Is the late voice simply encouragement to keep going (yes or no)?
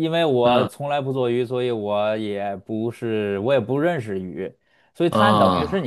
yes